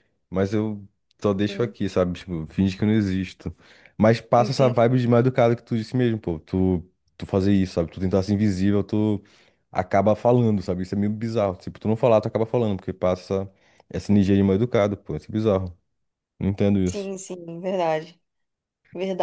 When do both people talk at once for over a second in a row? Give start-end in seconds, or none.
none